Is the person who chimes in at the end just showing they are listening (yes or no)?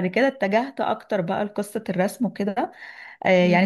yes